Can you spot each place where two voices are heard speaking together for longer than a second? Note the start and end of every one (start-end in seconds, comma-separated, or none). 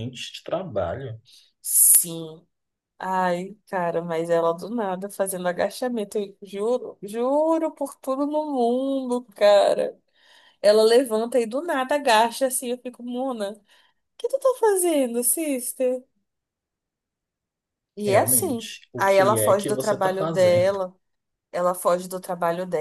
18.1-20.8